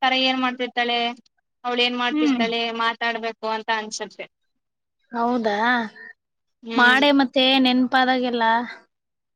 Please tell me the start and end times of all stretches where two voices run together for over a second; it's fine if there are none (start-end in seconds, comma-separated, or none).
none